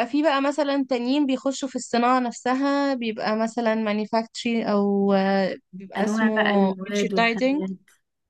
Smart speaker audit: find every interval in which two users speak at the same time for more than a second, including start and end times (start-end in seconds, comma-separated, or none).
6.0-7.6